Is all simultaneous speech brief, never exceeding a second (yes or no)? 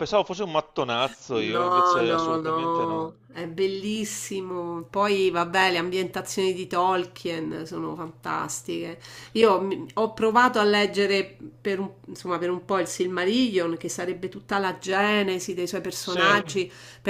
no